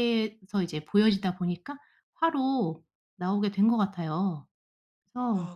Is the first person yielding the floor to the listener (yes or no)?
yes